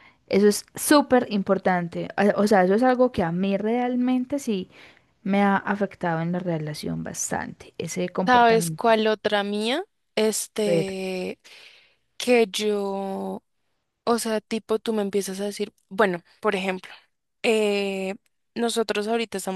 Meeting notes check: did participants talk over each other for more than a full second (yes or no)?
no